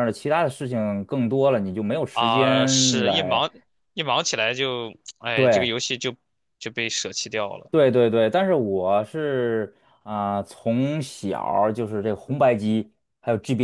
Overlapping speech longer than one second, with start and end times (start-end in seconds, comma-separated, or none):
2.1-3.5